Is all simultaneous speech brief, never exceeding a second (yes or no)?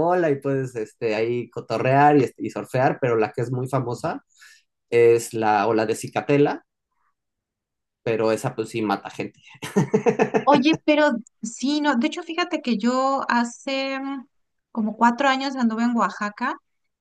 yes